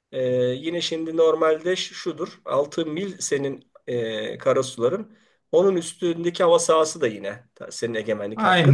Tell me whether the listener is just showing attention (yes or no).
no